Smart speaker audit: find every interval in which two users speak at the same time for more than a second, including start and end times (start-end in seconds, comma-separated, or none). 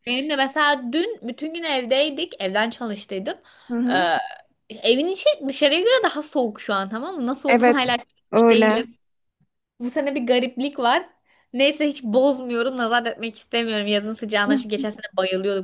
7.5-8.9